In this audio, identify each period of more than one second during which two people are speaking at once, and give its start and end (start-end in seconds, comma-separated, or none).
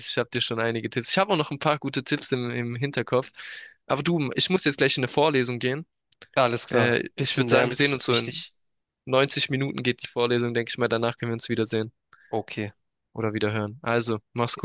6.7-8.4